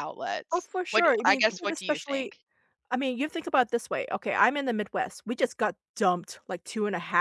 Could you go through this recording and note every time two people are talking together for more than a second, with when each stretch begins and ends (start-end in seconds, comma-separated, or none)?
0.5-2.3